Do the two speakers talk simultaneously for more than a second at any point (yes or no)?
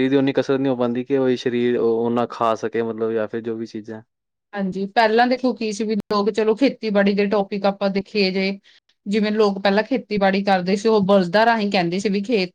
no